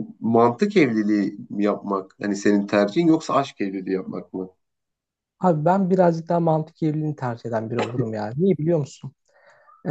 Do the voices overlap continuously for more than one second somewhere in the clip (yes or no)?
no